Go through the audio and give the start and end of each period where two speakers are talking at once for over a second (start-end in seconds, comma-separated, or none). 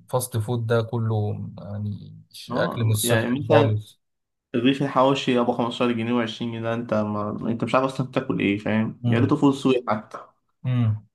2.5-3.8